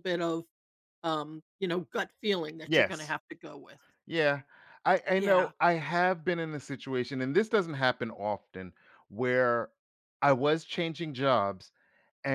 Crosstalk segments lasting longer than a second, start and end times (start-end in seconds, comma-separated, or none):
none